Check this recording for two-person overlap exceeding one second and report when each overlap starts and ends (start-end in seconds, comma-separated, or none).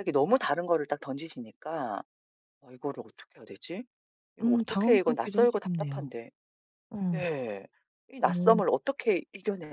4.4-6.1